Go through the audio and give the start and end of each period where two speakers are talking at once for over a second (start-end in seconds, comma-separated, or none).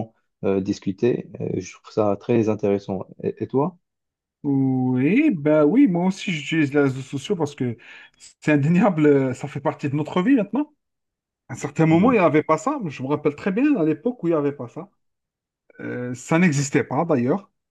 none